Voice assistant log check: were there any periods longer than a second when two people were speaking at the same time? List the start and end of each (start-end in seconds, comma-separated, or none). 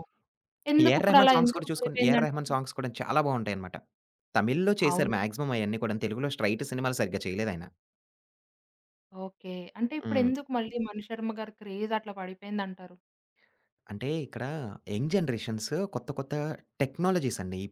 0.8-2.5